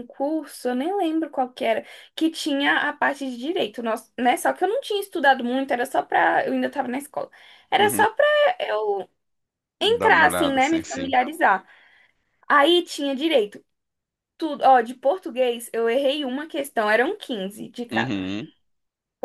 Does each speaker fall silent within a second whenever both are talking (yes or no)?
no